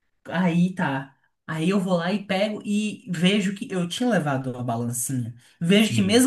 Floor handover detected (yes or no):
no